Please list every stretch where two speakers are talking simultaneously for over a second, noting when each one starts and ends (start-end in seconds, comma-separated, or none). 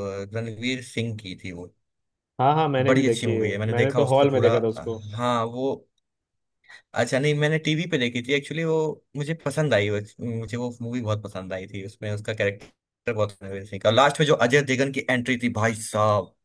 2.9-4.5